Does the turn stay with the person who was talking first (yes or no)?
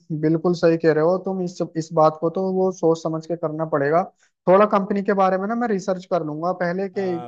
yes